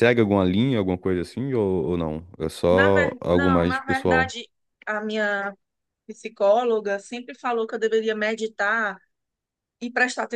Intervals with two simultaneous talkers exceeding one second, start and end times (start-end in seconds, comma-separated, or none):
2.7-4.3